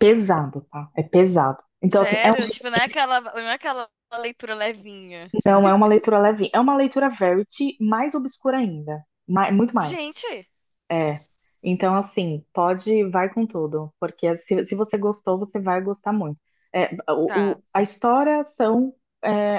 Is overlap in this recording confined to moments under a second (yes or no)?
yes